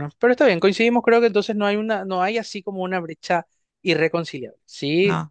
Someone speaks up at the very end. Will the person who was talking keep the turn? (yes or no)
yes